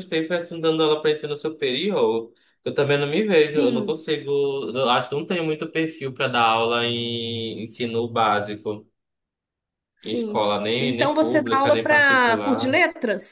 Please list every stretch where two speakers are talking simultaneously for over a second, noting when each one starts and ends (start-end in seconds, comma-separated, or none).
10.0-12.8